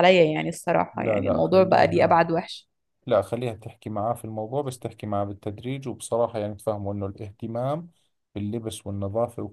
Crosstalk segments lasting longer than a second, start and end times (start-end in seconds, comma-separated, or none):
0.9-2.2